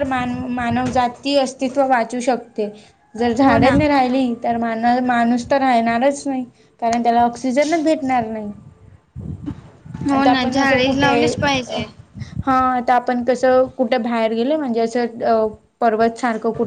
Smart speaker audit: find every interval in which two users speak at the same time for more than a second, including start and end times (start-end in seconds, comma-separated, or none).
10.2-11.8